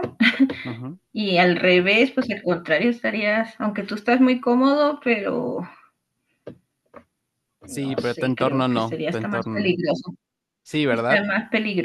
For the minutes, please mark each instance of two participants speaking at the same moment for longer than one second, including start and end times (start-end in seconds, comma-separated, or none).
7.7-9.8